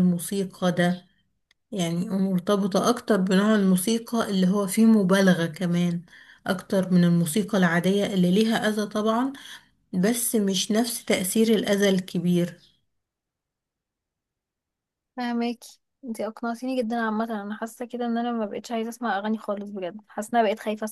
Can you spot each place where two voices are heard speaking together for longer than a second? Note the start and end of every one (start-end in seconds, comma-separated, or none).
none